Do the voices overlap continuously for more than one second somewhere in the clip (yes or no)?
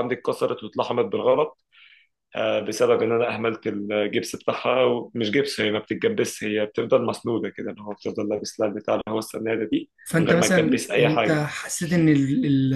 yes